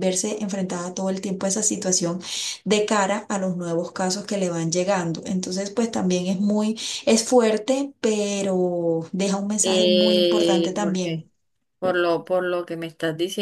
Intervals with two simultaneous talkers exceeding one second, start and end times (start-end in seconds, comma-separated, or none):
9.6-11.2